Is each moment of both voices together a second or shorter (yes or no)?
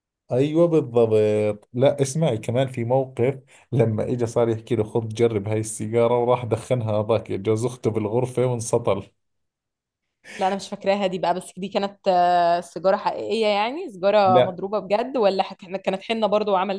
yes